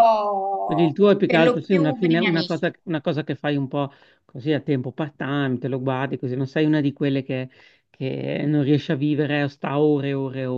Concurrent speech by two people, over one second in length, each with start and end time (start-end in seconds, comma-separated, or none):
0.6-2.7